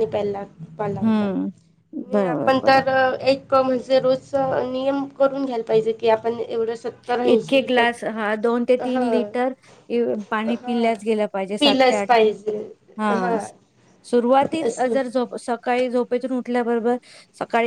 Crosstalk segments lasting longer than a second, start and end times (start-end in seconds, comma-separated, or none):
7.3-9.3